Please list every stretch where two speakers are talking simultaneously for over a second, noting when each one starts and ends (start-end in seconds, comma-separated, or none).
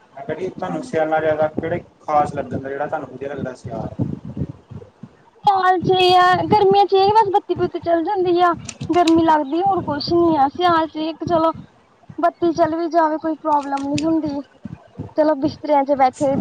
none